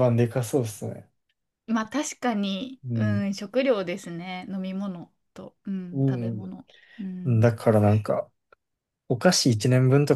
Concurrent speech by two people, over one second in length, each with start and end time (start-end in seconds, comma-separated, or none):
none